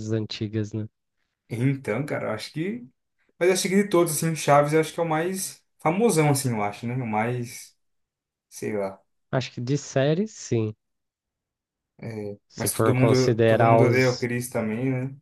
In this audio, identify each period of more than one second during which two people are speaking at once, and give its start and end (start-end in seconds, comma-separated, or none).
12.5-14.3